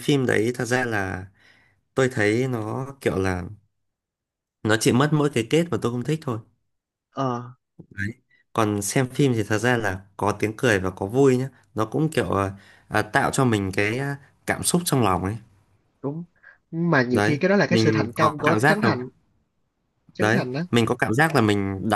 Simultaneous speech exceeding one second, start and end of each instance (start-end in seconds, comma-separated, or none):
17.1-18.9